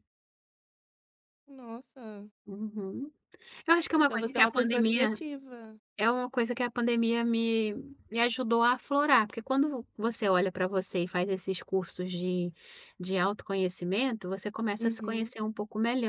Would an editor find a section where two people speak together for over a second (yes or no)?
yes